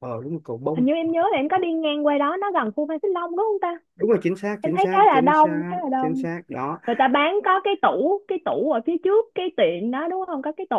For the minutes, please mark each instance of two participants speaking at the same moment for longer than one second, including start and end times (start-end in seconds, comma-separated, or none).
4.6-6.2